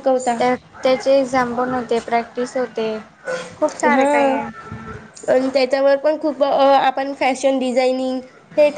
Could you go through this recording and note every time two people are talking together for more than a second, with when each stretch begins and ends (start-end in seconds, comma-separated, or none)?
none